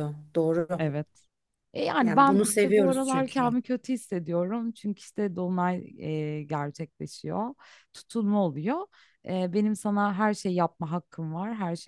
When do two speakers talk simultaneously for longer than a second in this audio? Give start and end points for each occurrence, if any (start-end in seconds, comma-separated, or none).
2.0-3.5